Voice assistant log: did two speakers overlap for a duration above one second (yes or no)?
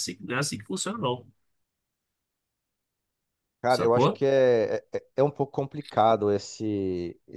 no